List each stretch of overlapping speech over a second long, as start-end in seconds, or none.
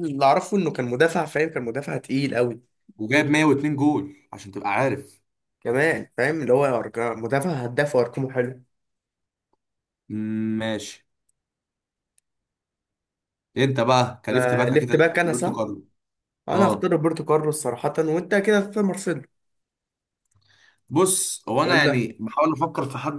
14.3-15.6